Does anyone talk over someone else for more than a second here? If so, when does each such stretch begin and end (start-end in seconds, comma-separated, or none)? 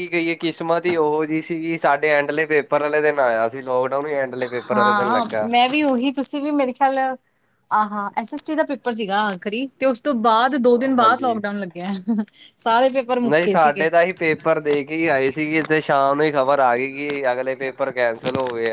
none